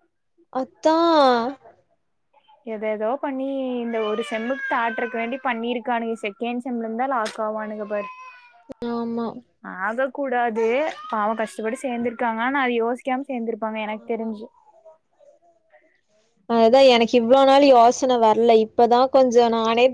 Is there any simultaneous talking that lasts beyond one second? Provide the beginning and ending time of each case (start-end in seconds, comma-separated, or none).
none